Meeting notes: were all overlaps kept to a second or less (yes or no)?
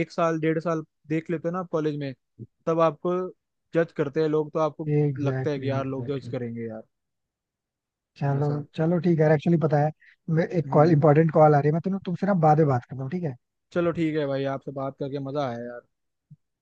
no